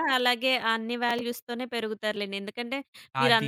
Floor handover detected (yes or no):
no